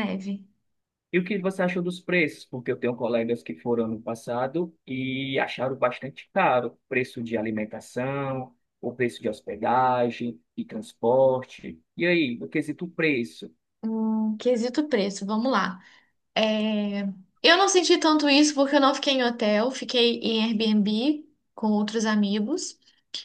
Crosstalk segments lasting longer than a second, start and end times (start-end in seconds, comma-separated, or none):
none